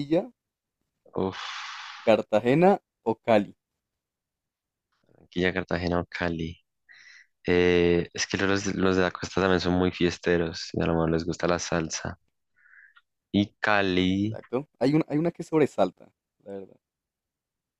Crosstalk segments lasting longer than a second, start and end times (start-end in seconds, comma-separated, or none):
none